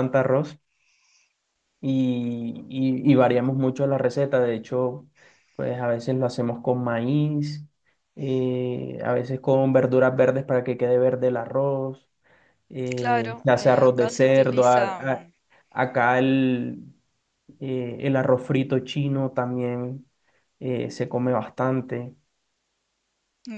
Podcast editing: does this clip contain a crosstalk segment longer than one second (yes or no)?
yes